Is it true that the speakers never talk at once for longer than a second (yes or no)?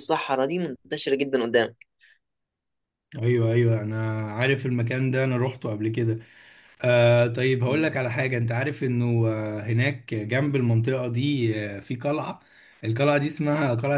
yes